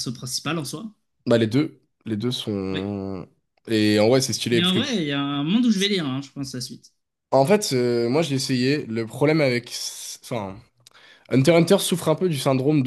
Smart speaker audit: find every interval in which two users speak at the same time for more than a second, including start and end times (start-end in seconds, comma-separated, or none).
none